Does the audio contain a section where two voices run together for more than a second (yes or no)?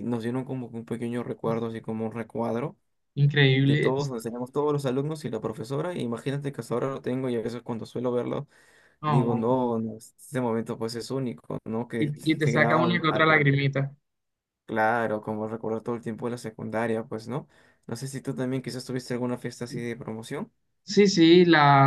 yes